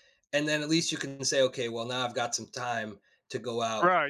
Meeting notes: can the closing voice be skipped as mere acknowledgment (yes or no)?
no